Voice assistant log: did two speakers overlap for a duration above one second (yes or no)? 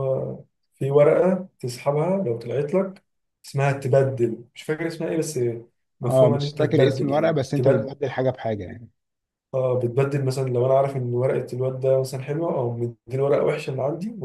yes